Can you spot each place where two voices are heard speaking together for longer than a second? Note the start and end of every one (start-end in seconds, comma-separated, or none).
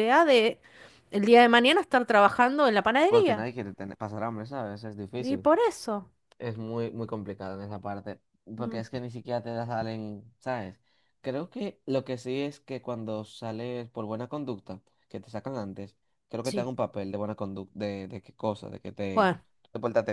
none